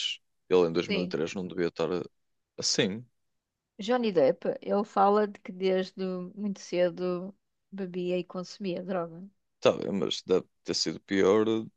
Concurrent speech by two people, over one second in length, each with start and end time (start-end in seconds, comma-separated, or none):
none